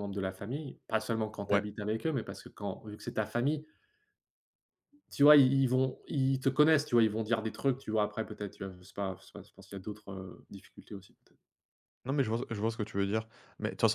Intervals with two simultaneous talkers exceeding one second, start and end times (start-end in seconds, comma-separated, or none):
none